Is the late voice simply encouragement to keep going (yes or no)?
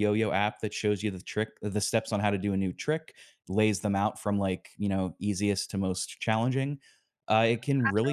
yes